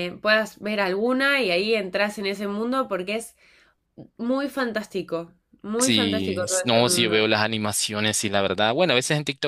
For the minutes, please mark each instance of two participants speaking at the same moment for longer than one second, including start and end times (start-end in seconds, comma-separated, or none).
5.8-7.3